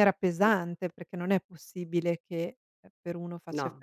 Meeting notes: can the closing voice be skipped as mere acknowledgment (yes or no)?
yes